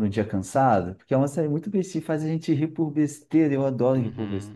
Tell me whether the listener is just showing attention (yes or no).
no